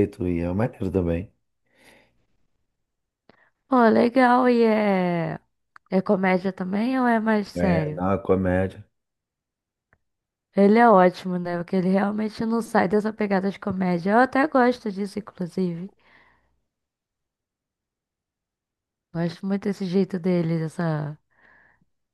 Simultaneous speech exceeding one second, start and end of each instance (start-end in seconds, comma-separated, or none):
none